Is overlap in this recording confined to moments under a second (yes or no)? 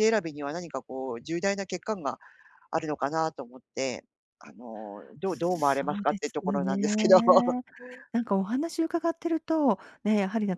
no